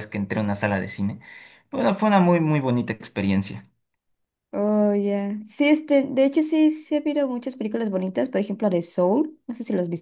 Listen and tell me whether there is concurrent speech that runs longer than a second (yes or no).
no